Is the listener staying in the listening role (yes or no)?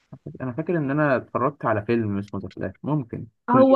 no